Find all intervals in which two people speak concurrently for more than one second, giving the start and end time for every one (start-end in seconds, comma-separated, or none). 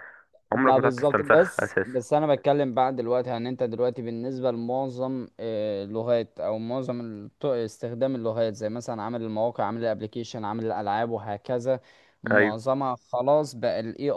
0.5-2.0